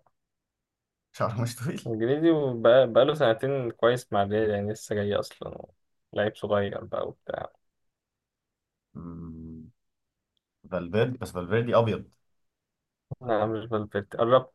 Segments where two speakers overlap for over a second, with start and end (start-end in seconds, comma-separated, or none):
none